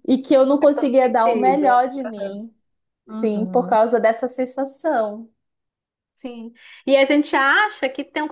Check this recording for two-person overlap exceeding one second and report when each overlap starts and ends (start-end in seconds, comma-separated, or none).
0.6-1.8